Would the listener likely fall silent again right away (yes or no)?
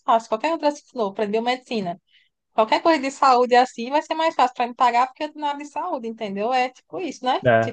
no